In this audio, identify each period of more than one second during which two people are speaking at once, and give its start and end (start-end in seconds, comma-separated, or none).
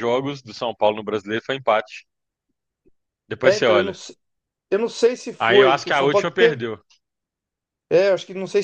5.4-6.6